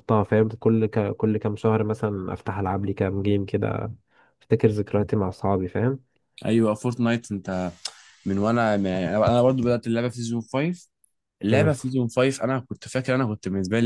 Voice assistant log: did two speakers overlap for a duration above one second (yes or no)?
no